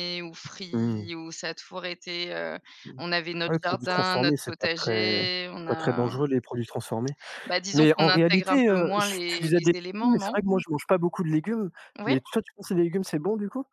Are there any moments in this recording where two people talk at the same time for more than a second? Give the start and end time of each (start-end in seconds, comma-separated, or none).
3.5-6.2, 7.7-10.4